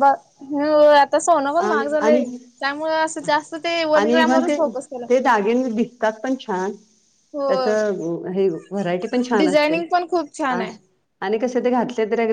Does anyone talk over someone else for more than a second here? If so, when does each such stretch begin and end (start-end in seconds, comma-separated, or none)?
none